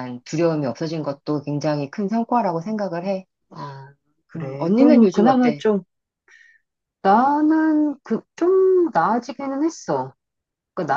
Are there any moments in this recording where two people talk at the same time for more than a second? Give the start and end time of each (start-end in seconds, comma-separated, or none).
4.4-5.7